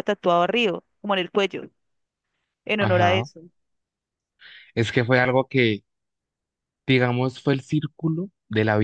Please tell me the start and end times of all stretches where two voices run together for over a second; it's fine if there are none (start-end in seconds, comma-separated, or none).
none